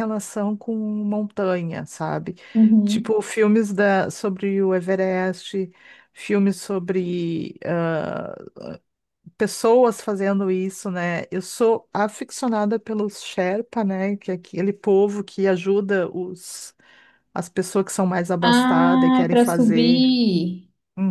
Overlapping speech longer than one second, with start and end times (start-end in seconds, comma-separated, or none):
18.4-20.1